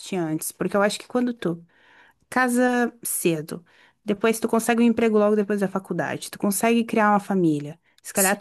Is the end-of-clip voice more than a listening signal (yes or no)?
no